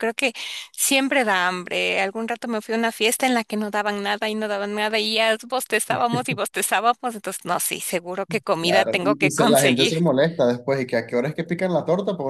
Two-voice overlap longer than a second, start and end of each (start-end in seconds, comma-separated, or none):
8.6-9.9